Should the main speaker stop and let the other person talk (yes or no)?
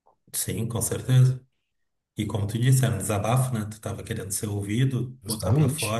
no